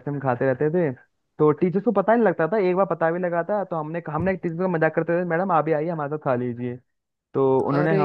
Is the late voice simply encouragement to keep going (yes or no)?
yes